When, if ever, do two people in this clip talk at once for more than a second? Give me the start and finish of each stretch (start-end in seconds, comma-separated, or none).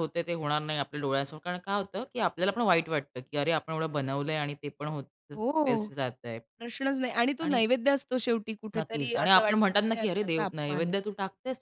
8.8-10.9